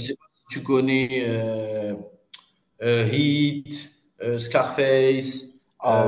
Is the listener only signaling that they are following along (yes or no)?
no